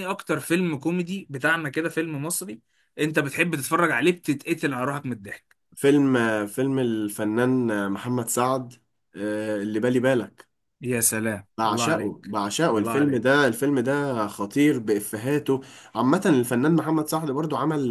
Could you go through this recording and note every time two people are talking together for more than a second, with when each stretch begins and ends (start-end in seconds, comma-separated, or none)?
11.6-13.2